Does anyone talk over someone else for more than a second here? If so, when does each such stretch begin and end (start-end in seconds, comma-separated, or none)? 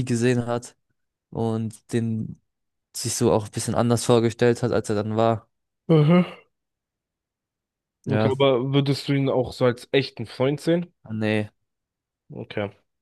none